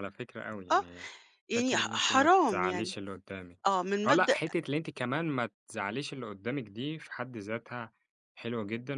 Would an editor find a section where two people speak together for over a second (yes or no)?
yes